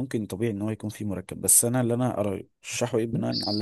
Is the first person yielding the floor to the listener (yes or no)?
no